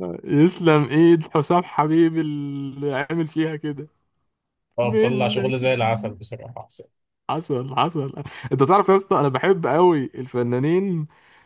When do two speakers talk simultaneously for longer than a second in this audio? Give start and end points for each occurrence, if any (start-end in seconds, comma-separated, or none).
4.8-6.1